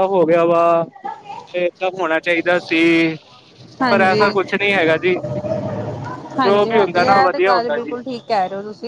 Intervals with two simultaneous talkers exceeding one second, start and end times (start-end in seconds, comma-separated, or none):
6.4-7.9